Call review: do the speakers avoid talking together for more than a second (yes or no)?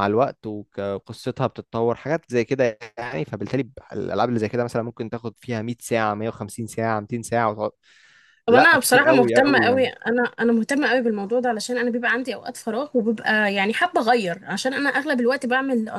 no